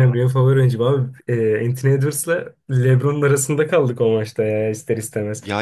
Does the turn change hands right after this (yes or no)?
no